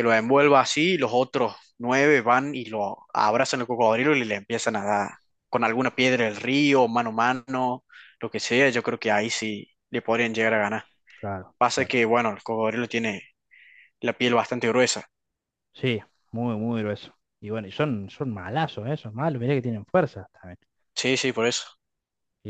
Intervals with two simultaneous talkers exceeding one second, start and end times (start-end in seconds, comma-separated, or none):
none